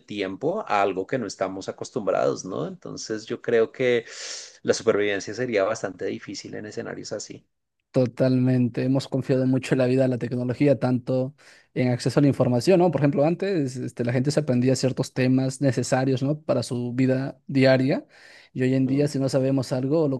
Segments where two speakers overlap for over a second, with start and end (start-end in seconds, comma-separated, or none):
none